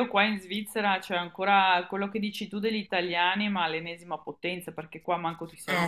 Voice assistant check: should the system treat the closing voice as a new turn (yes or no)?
no